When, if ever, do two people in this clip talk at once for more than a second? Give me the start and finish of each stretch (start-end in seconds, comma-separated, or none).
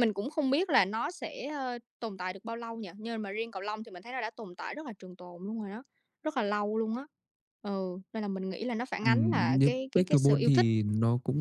9.0-10.7